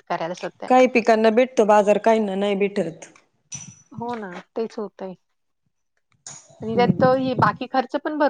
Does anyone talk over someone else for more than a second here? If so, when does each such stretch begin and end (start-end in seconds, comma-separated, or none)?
none